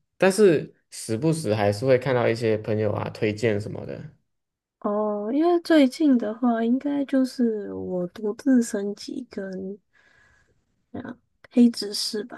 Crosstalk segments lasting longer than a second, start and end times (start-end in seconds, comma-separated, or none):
none